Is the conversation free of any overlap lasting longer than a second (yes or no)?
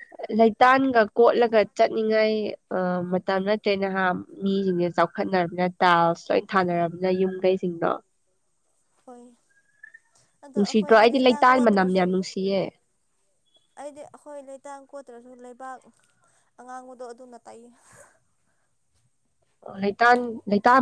no